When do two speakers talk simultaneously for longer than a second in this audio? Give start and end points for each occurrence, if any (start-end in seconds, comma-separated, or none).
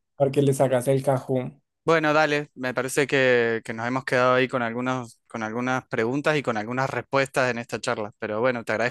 none